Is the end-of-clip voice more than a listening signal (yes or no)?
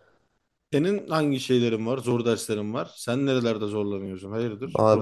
yes